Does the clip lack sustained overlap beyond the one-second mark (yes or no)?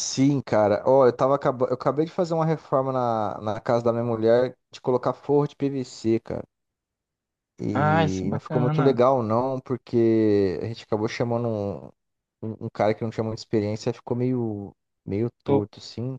no